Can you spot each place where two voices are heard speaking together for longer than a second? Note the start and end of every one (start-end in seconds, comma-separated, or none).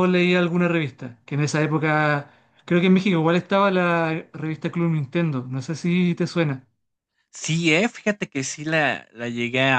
none